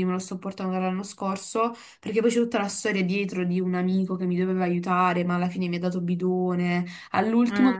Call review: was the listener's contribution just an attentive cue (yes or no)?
yes